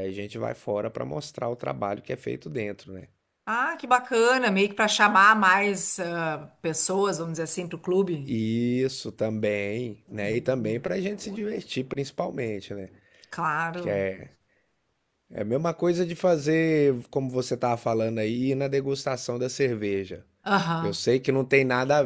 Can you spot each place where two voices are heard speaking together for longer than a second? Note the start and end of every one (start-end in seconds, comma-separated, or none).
none